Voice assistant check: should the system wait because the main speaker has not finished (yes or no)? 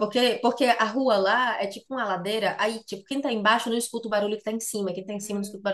yes